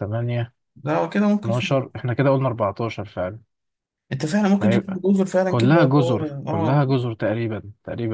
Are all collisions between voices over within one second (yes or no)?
no